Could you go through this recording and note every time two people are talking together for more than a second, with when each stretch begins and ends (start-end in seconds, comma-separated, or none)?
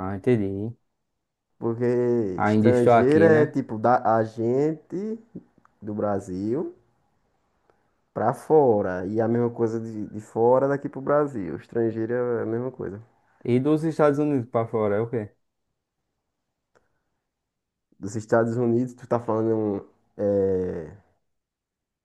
2.3-3.6